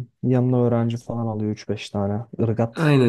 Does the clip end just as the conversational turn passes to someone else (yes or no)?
yes